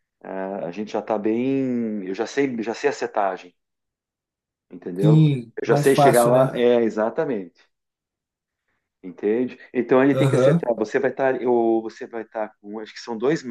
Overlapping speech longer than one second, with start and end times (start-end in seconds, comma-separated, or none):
5.0-6.7